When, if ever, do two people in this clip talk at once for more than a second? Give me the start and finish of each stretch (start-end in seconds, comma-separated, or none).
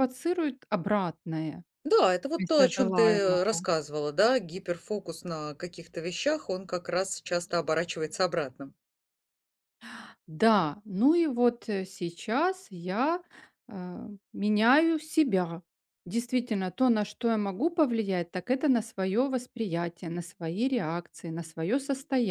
2.4-3.6